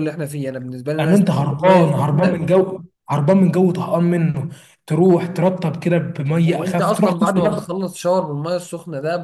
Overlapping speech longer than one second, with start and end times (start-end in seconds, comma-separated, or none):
1.0-2.4, 6.4-7.7